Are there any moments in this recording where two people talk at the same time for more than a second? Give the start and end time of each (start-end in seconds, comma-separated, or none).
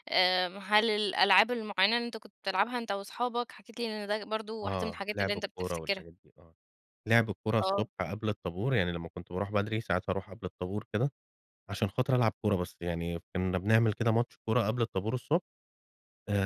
4.6-6.0